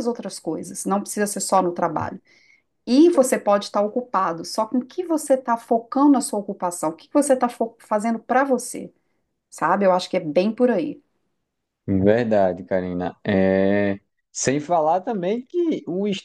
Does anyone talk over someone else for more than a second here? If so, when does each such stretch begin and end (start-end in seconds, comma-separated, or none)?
none